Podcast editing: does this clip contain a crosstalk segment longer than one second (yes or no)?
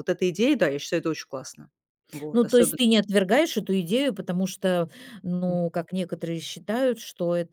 no